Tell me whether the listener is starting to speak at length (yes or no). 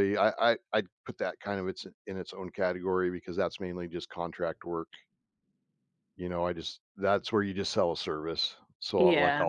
no